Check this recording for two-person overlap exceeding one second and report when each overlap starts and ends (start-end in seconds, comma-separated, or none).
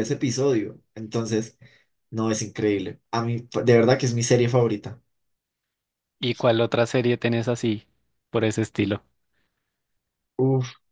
none